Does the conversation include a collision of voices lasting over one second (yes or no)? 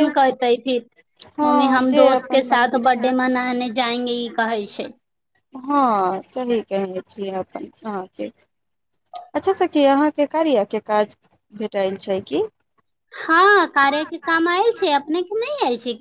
yes